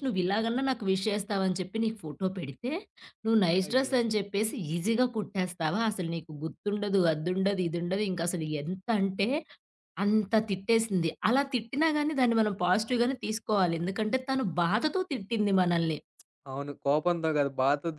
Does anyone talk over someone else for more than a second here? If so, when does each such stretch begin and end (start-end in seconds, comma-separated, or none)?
none